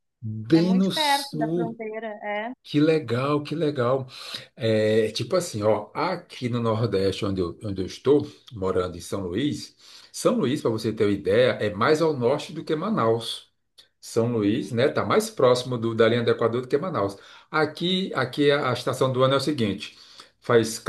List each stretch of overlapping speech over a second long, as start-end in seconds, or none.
0.5-1.8